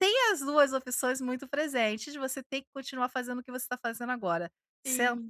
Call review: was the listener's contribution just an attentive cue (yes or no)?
yes